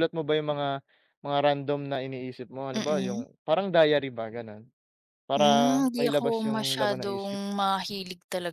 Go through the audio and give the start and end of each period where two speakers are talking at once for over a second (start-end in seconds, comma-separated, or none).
5.4-7.4